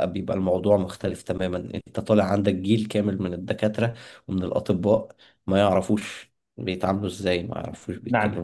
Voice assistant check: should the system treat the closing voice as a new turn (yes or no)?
yes